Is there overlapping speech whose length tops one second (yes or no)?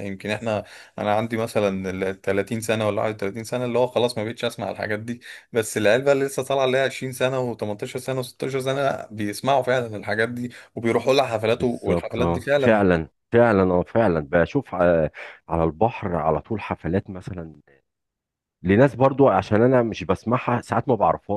yes